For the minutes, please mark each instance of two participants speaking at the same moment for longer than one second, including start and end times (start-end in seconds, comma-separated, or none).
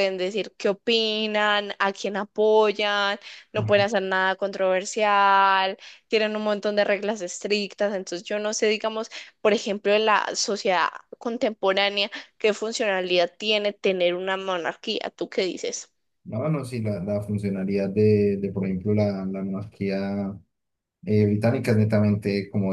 none